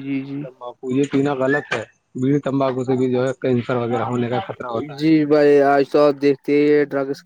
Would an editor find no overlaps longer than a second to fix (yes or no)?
yes